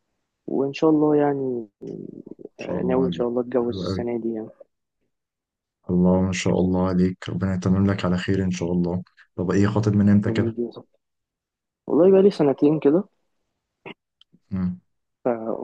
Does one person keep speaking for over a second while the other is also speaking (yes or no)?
yes